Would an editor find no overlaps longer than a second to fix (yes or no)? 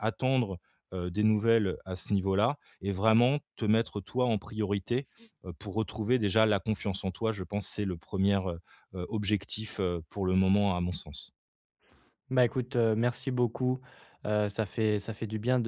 yes